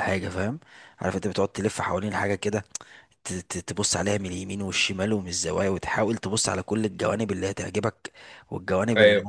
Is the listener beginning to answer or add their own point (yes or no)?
no